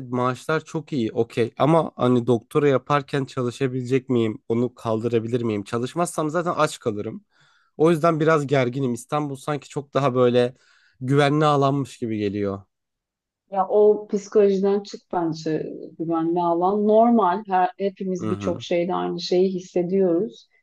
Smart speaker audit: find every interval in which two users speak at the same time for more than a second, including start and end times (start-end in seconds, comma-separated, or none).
none